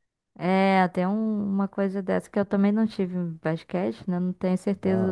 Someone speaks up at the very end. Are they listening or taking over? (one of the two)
taking over